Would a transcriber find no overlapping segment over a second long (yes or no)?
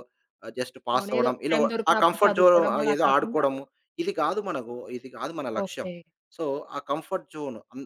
no